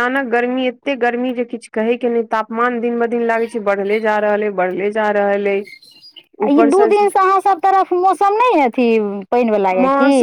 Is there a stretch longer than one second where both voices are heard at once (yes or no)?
no